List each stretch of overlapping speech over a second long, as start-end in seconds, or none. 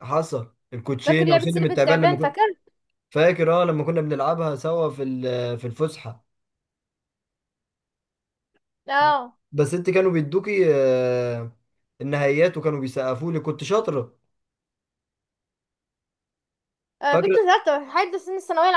1.1-2.4